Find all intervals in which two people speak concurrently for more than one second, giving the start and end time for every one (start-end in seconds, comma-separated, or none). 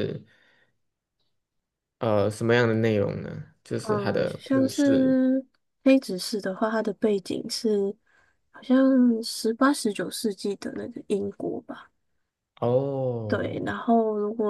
3.8-5.2